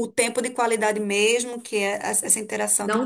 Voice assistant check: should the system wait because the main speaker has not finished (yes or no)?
yes